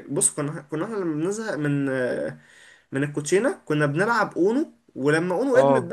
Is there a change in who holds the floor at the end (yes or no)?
no